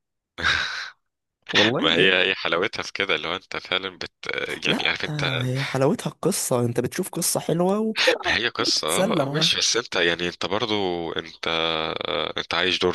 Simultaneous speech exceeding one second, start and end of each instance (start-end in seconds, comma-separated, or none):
8.3-9.5